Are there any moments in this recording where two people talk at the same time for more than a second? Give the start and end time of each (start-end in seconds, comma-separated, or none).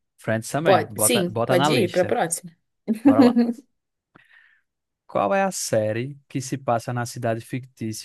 0.6-2.2